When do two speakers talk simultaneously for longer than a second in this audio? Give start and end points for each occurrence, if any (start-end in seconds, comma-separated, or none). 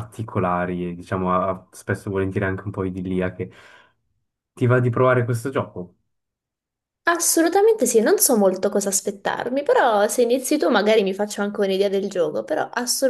none